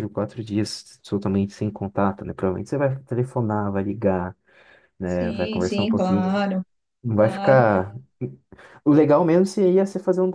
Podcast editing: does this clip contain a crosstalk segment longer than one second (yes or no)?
yes